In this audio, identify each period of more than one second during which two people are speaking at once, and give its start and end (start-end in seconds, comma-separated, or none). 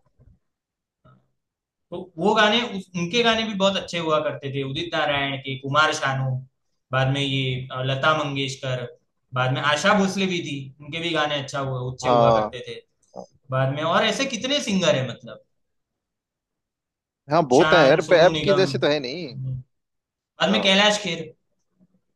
17.6-19.4